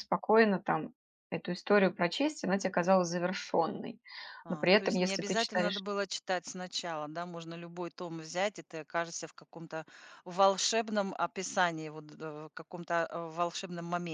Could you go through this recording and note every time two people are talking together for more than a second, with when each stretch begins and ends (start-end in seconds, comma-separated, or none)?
4.5-5.8